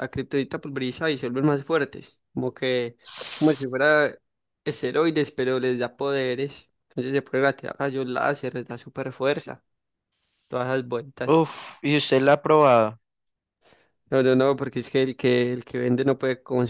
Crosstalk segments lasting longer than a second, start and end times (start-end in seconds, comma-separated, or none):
none